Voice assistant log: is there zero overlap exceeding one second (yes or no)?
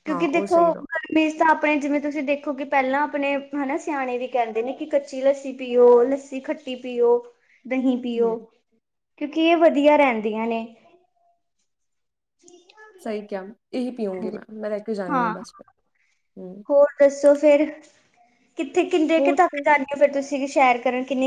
yes